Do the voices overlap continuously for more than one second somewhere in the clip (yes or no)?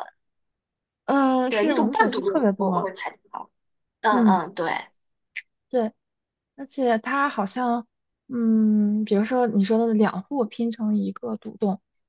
yes